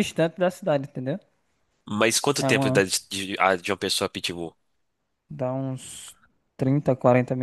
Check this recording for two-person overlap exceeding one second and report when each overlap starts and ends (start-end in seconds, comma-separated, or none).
none